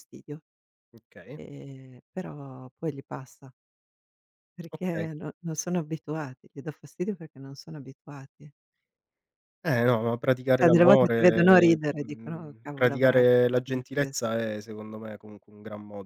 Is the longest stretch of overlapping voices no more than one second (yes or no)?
no